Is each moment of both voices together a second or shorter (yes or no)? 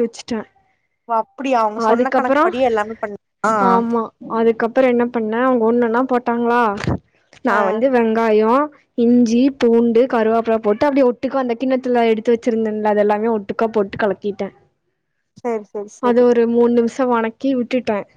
yes